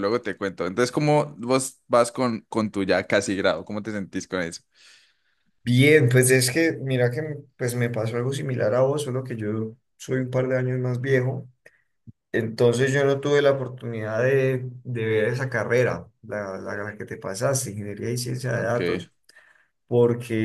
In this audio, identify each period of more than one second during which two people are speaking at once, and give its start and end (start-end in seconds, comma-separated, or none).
none